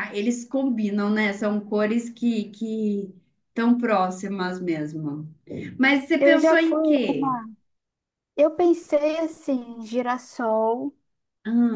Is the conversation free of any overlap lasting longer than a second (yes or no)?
no